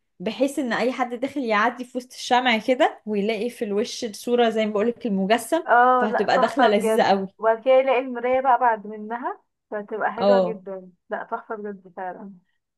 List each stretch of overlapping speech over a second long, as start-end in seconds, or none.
5.7-7.3